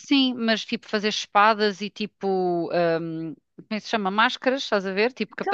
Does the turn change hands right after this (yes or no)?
yes